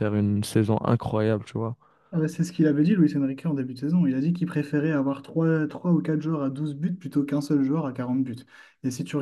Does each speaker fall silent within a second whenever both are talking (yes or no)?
yes